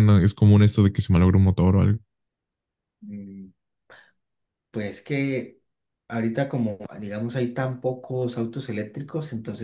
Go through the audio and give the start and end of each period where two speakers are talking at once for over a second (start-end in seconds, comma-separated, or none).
none